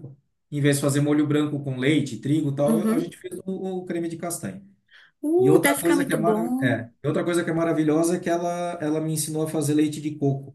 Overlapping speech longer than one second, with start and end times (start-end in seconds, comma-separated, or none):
5.4-6.8